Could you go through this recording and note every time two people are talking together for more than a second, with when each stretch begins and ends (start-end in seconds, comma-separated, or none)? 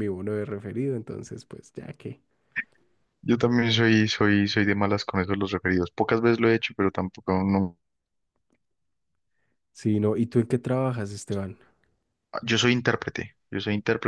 none